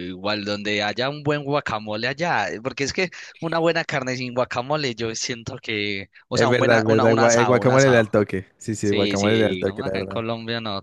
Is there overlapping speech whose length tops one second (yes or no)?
yes